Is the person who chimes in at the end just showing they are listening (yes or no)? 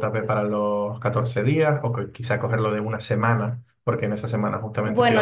no